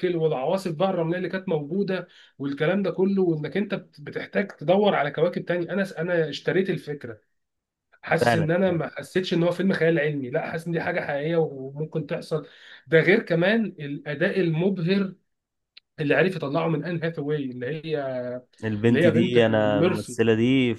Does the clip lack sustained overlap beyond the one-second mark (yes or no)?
no